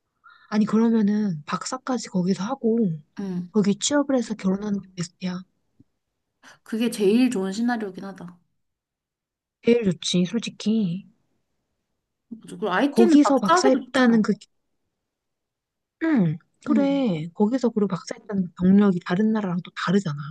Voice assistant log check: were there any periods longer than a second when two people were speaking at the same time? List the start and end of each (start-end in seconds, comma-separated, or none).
12.9-14.2